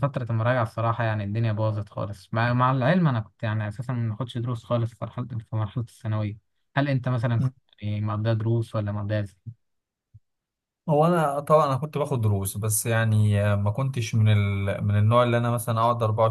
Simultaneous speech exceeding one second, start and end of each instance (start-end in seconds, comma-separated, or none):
none